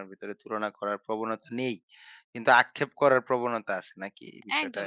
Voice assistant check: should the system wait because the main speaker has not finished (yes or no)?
no